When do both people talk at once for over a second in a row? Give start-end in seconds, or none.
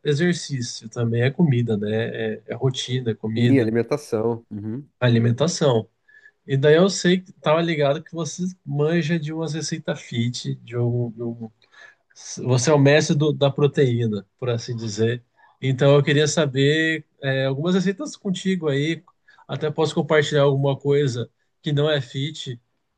none